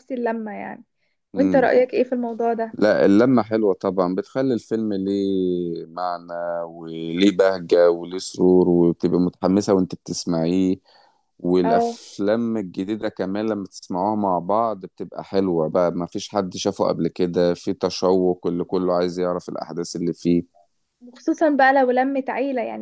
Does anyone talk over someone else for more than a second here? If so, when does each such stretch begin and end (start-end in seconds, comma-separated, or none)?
none